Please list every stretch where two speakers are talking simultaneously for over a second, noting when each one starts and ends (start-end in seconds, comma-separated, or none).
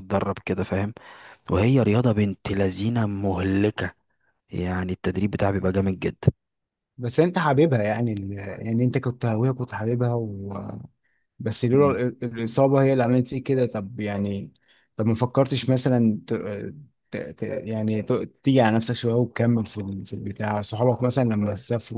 none